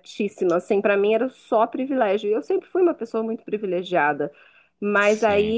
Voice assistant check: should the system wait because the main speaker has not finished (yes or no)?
yes